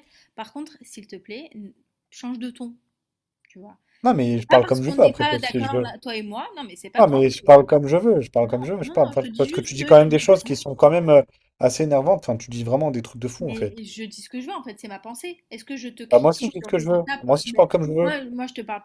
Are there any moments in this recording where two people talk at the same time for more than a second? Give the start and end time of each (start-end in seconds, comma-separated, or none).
4.5-5.8, 8.4-10.0, 16.1-18.1